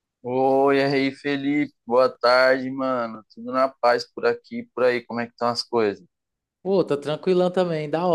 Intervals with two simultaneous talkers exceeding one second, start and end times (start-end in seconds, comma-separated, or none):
none